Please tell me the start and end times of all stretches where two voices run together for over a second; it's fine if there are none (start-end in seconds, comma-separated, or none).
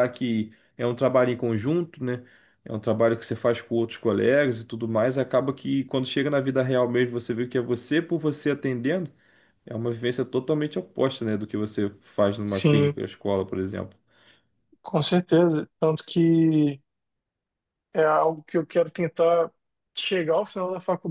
none